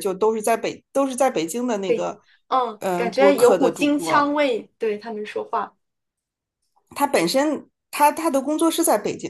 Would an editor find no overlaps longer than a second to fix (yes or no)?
no